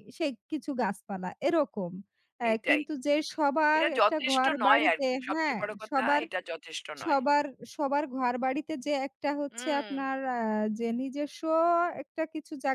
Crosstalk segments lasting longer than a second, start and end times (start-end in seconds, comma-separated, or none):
3.8-6.2